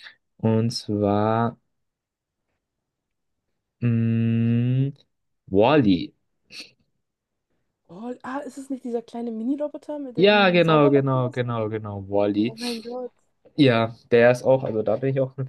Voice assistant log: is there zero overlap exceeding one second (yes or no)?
no